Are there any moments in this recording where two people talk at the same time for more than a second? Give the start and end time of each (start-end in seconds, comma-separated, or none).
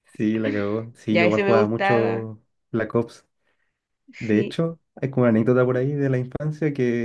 1.1-2.3